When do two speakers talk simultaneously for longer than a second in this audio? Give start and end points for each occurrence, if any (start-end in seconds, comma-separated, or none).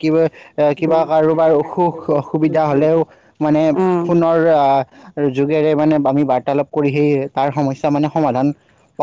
0.8-2.6